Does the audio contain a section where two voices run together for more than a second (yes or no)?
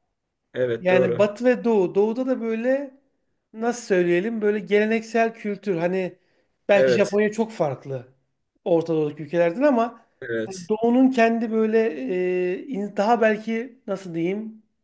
no